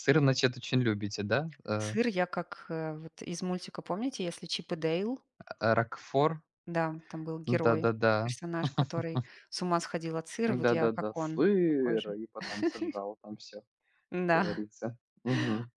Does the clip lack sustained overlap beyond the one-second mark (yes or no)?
no